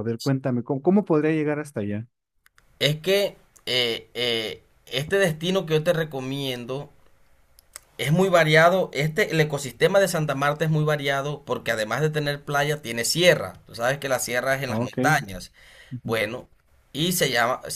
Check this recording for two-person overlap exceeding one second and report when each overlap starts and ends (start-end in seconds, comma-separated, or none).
none